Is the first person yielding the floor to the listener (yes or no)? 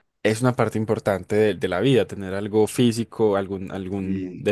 no